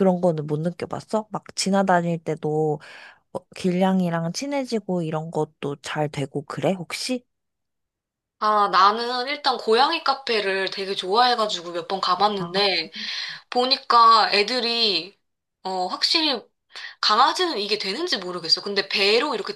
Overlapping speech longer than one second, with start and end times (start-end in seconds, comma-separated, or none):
none